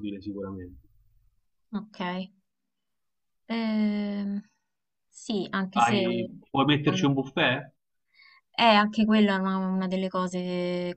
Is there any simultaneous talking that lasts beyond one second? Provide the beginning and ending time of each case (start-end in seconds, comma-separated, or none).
none